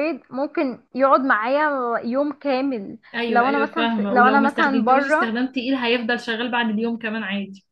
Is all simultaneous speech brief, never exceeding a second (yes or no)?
no